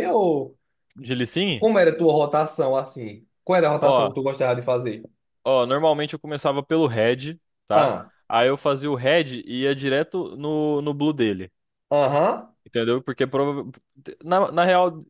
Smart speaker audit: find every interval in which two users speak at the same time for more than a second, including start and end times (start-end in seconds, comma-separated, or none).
none